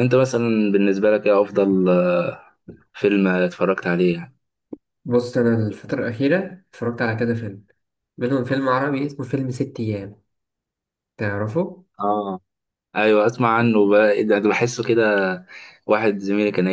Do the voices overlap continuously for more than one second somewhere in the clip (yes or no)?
no